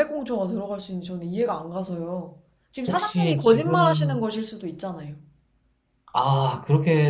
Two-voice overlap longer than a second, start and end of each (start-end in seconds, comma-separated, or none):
2.9-4.3